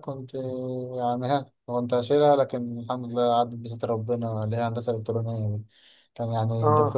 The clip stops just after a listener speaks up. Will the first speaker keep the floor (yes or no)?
yes